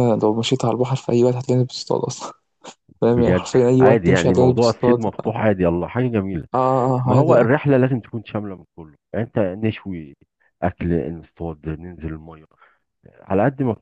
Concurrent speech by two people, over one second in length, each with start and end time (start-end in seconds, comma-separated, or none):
3.0-5.0